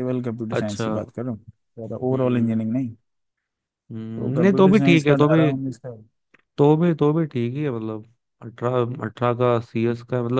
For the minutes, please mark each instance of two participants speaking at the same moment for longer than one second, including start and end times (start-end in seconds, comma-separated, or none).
4.2-5.5